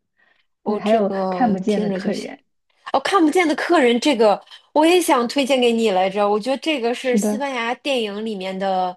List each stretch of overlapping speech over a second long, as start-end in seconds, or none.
0.6-2.3